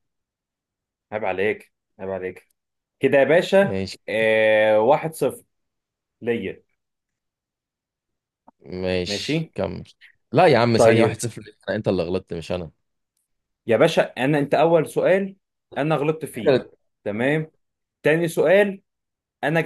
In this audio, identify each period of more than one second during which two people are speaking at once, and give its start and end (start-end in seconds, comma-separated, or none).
none